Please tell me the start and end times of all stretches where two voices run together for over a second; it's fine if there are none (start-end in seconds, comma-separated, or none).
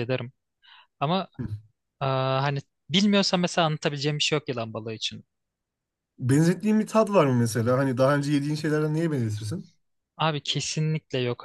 none